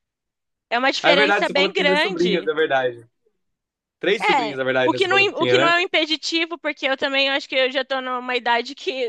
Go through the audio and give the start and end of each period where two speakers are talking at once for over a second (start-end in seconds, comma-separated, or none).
1.0-2.5, 4.2-5.7